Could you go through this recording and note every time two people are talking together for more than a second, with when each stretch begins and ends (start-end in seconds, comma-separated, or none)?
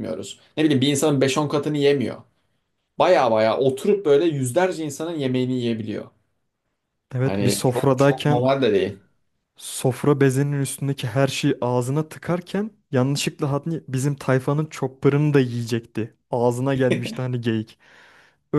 7.2-8.5